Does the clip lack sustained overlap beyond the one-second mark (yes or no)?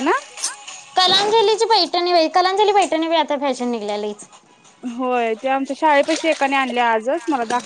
yes